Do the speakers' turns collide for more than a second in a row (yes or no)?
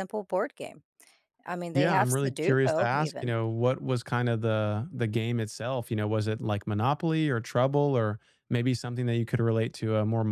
yes